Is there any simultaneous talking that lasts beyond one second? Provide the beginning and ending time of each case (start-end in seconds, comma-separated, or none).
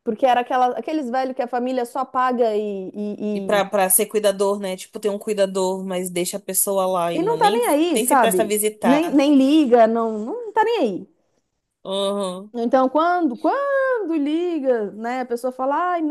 7.1-9.2